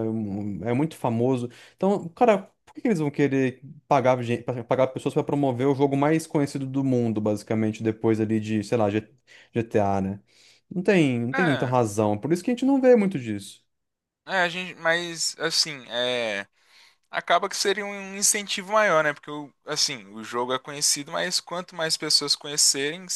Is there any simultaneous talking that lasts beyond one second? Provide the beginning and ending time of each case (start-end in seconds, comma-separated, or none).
none